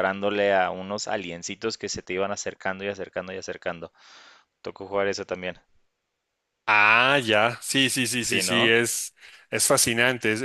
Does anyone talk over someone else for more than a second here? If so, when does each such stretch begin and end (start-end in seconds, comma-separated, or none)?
none